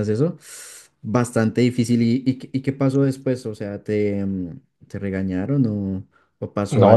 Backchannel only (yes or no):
no